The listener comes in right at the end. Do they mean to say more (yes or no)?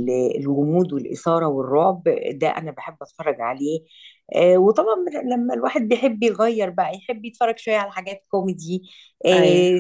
no